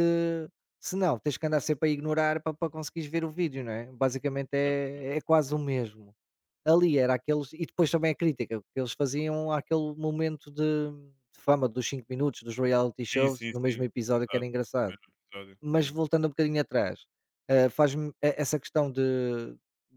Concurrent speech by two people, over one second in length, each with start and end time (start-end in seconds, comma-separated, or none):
13.1-14.9